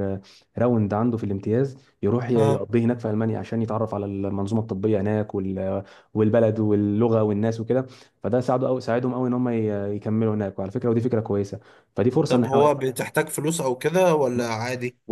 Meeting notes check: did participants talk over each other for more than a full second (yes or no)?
no